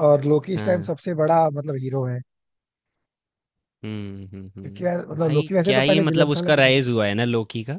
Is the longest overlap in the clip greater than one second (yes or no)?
yes